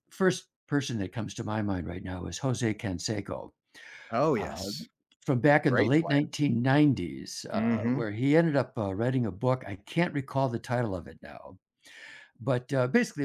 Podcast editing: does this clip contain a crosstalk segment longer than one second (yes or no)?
no